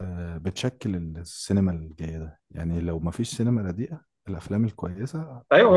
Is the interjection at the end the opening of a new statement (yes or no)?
yes